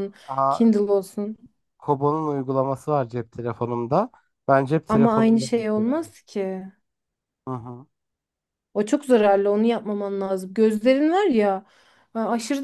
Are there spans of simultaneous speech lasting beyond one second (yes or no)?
yes